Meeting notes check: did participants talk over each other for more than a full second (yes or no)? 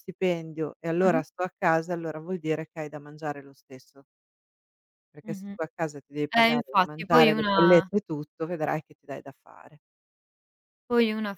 yes